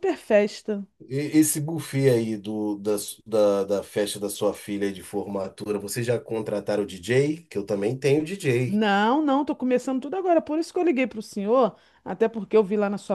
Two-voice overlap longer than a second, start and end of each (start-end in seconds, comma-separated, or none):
none